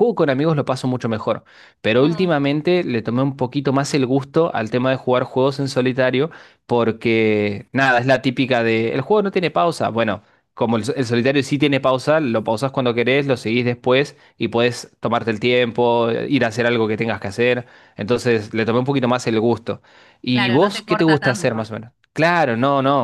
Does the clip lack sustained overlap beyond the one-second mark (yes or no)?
no